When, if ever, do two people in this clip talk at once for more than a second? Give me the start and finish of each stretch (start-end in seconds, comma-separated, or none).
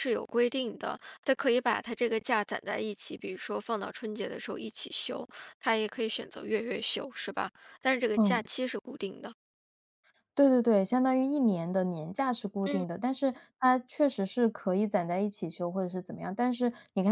none